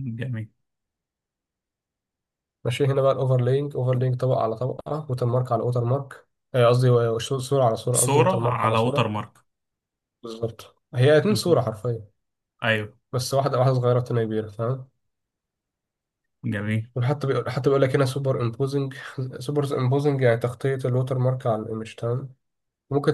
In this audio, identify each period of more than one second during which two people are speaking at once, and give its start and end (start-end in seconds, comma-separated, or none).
7.9-9.1